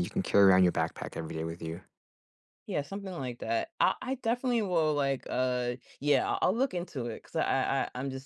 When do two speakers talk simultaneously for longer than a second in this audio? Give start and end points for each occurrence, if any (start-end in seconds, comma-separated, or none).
none